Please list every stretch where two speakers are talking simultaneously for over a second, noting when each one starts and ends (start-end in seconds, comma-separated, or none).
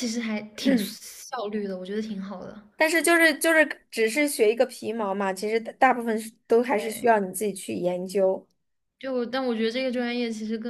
none